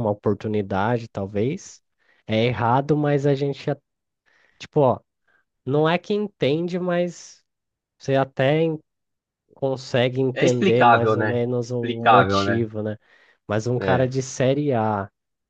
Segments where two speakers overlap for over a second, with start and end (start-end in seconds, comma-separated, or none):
10.3-12.6